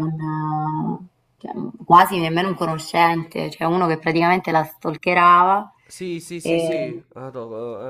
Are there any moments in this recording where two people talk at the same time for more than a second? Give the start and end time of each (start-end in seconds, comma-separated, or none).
none